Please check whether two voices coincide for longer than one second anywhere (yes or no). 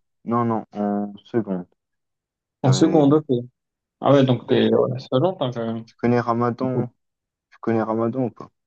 no